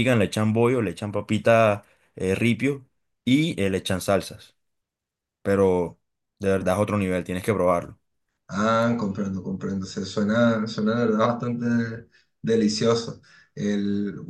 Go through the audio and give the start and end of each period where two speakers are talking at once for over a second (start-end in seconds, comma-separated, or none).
none